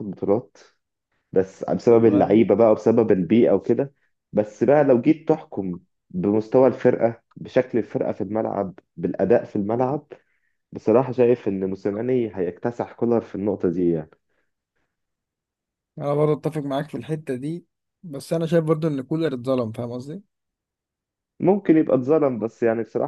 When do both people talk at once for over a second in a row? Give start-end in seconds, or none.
none